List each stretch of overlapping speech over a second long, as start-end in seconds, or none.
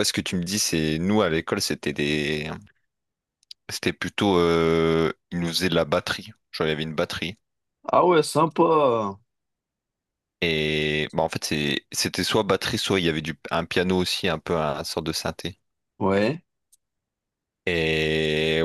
none